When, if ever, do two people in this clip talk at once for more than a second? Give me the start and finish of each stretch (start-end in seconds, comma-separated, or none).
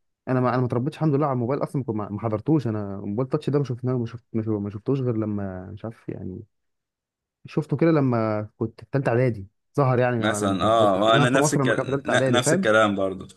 10.2-12.7